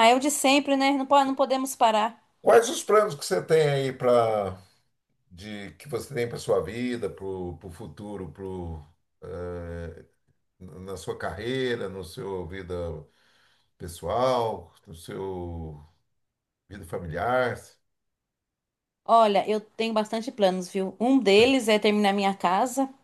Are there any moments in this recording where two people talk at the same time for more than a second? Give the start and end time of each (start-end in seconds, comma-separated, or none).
none